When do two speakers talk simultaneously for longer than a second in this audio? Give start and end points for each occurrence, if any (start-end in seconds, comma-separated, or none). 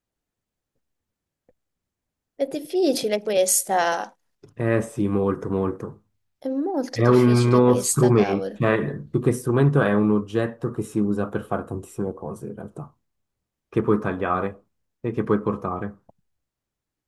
6.9-8.6